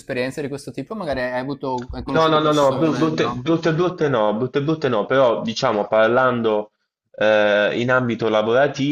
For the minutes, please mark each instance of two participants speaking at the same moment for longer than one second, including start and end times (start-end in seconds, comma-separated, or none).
2.1-3.4